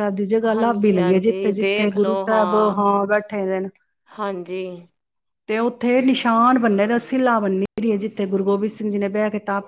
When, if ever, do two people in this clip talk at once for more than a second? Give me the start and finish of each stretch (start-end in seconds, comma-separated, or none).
0.6-2.1